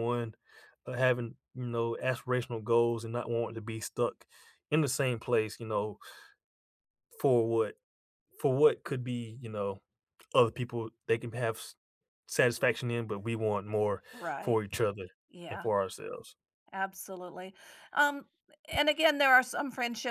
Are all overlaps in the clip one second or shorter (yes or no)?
yes